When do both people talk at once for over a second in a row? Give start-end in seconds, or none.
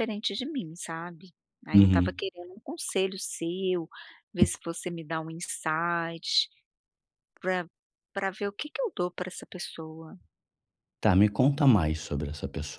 none